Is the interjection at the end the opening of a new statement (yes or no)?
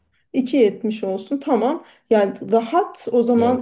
no